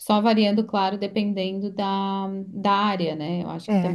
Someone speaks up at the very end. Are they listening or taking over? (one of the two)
taking over